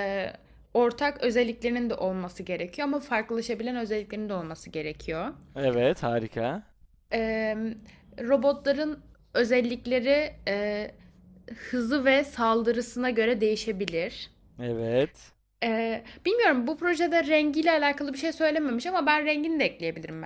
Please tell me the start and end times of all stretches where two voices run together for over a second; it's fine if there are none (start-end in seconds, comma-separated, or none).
none